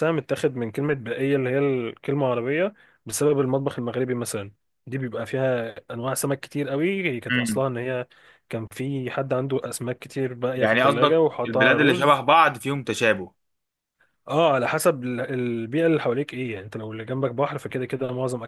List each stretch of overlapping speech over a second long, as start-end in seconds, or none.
10.6-12.2